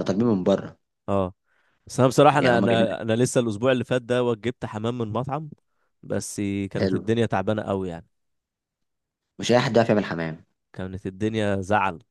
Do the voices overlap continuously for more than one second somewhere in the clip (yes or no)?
no